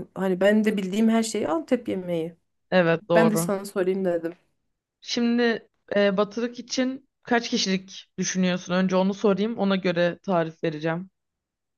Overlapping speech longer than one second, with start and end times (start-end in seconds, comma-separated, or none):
none